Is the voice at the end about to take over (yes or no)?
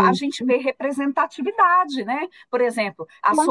no